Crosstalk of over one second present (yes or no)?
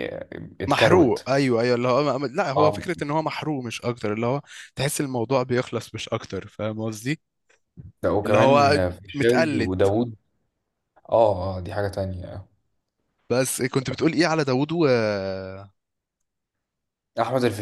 yes